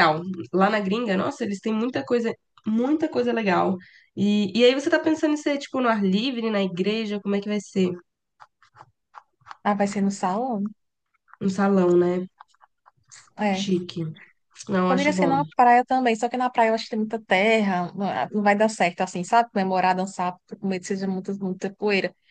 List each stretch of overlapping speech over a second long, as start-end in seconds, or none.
none